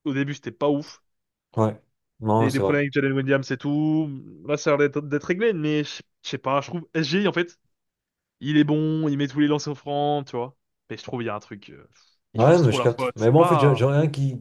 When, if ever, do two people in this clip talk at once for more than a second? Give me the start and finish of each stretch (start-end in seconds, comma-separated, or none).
12.3-13.9